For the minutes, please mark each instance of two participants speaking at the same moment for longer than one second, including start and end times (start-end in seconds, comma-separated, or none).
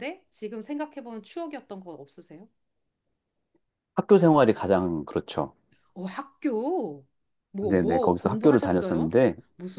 7.6-9.2